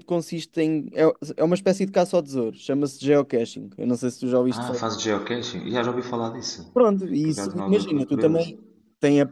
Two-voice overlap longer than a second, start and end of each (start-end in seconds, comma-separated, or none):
7.2-8.6